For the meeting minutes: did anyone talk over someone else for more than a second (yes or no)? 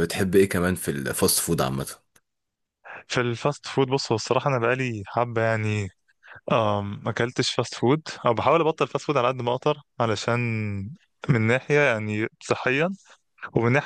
no